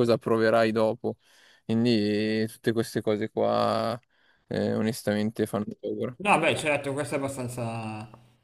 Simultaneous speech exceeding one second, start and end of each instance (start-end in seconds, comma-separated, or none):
none